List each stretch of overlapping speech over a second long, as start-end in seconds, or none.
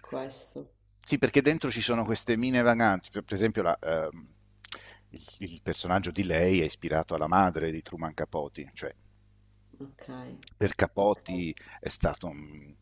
none